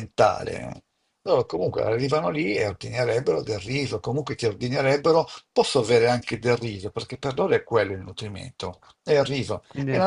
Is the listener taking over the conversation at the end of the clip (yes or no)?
no